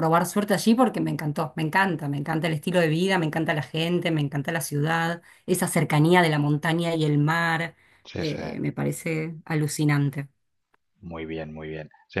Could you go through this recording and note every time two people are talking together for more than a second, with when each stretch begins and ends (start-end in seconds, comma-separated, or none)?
none